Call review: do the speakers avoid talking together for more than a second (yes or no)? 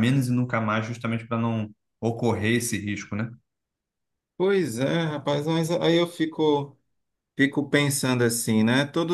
yes